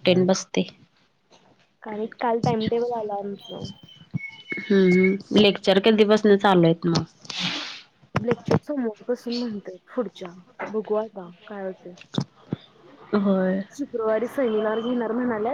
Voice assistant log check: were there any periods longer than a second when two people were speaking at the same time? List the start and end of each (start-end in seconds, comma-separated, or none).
none